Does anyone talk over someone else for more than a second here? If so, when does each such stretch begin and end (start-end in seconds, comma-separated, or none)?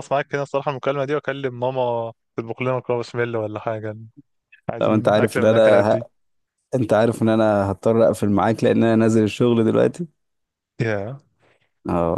4.8-6.1